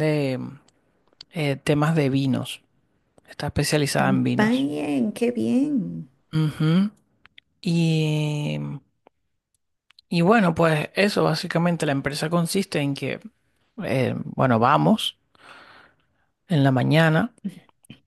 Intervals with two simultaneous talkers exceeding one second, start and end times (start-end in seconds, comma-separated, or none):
none